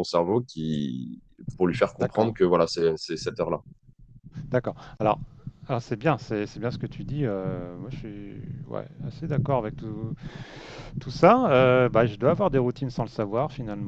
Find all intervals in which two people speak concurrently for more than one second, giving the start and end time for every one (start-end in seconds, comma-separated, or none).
none